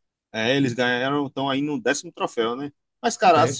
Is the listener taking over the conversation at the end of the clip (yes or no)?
no